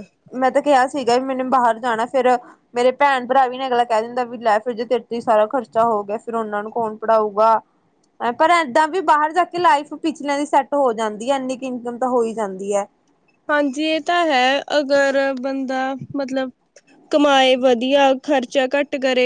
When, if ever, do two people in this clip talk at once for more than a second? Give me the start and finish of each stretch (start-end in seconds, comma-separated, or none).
none